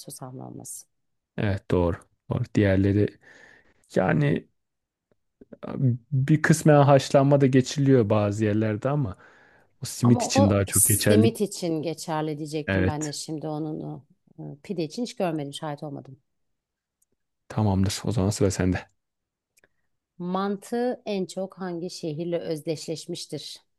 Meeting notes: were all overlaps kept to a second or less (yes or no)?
no